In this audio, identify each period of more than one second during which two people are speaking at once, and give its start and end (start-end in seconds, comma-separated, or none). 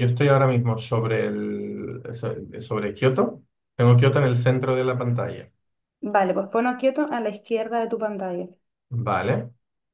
none